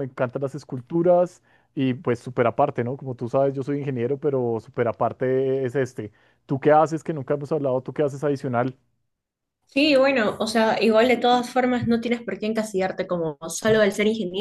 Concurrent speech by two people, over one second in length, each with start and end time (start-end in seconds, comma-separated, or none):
none